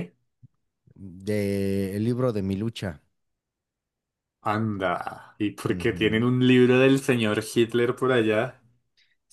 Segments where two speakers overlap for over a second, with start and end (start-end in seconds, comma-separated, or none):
none